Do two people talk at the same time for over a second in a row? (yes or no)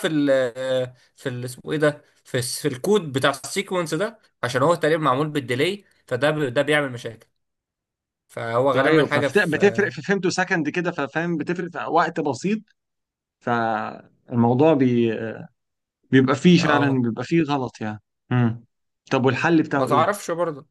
yes